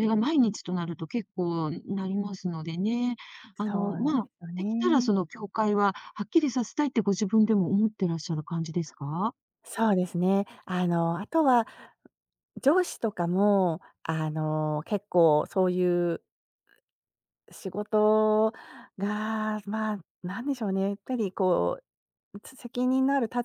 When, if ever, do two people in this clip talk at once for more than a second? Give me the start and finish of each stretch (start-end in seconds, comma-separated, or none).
3.7-5.2